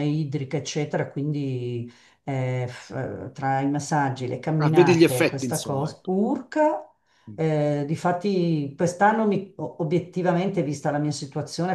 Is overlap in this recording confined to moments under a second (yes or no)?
no